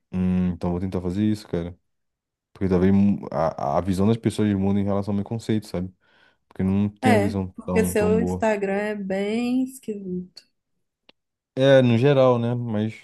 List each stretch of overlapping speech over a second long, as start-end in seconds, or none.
7.0-8.4